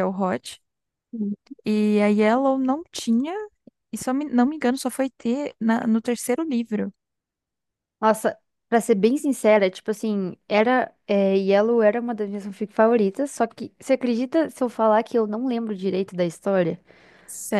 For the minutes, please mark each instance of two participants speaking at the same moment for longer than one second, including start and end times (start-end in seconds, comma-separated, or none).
none